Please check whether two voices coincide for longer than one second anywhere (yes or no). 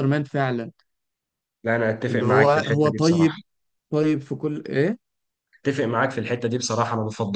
yes